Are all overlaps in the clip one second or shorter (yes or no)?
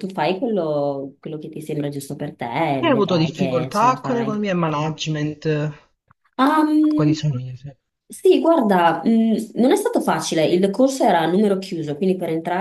no